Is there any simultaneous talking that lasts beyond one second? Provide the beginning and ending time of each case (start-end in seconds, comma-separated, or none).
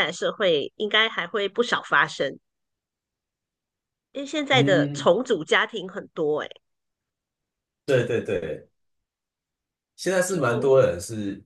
none